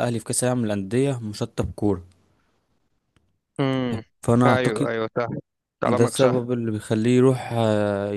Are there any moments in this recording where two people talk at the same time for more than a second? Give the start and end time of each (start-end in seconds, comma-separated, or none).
none